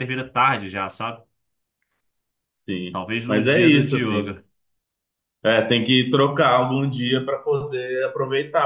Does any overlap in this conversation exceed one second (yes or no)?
yes